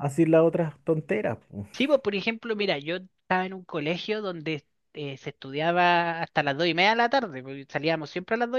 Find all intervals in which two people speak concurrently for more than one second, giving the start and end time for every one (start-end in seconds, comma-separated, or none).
none